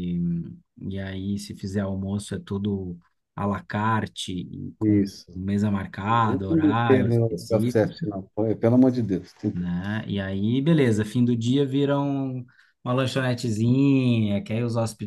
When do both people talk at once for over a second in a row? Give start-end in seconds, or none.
6.1-8.0